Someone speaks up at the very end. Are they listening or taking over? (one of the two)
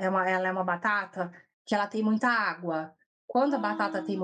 listening